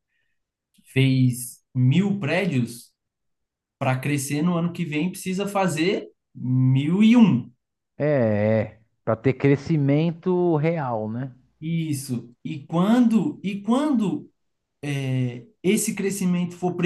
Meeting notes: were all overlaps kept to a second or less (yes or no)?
yes